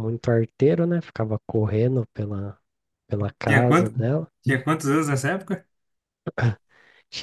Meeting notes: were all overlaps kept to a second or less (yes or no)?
yes